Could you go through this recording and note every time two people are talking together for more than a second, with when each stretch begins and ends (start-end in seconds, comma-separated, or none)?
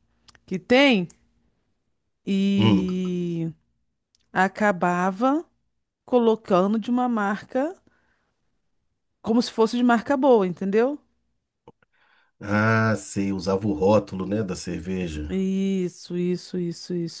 none